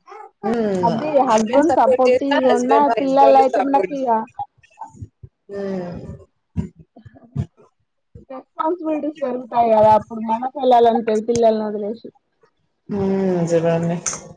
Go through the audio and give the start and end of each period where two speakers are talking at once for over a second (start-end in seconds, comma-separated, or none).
1.7-4.1